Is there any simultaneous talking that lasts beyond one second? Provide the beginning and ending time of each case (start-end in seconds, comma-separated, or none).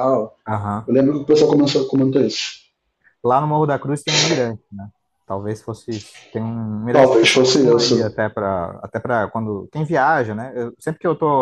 6.9-8.1